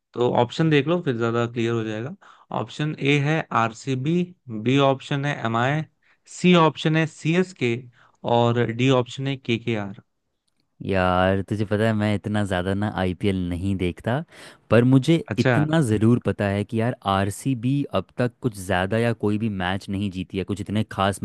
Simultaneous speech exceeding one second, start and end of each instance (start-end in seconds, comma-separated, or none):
none